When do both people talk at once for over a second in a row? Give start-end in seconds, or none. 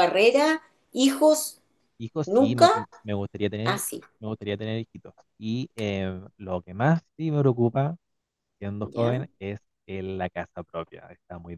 none